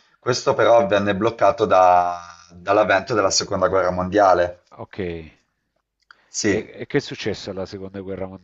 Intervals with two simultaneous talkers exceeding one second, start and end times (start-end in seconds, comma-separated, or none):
none